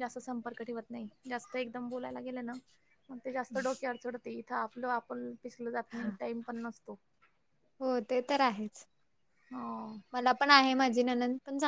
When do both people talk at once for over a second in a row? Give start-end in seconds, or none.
none